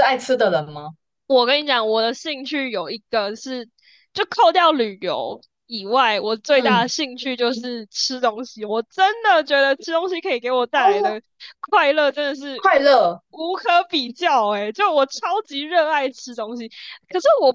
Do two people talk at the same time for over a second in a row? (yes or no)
no